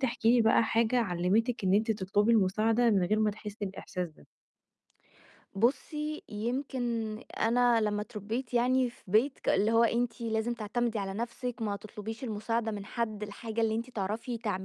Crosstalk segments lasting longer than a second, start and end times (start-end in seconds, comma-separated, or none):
none